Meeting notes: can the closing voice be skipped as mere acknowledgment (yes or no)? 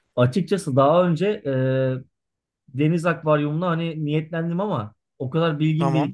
yes